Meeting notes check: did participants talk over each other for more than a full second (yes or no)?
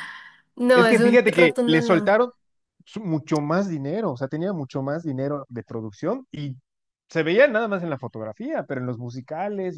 yes